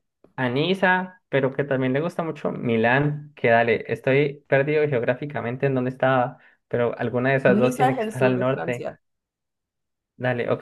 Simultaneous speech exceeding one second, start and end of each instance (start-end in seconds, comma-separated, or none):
7.5-8.9